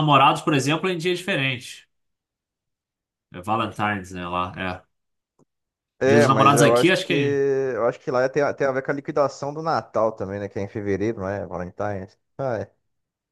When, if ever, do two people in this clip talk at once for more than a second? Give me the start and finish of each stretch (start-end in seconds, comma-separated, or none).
6.0-7.4